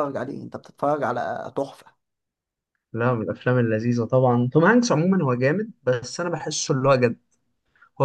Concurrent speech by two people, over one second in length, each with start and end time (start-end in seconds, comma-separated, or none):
none